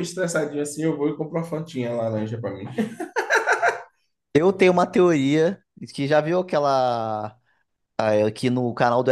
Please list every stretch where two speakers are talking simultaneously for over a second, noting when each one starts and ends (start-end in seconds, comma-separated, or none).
none